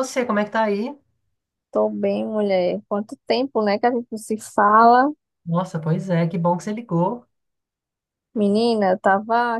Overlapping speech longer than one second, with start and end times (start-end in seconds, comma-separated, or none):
none